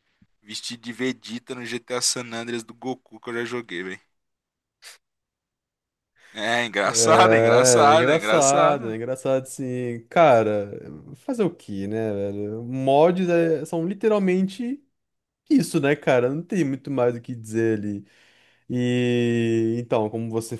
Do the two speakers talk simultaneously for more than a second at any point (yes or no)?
yes